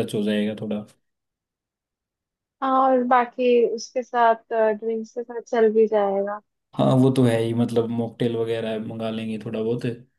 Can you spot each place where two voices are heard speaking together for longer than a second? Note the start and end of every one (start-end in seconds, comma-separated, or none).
none